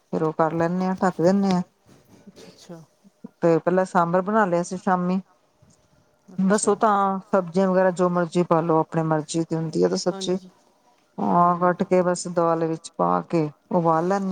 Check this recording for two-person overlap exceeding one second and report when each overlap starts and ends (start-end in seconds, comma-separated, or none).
none